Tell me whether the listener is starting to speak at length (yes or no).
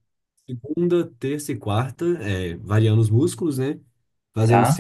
no